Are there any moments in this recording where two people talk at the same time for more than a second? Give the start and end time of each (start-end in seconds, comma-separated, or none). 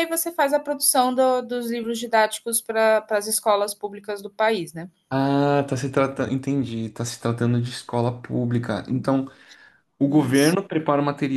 none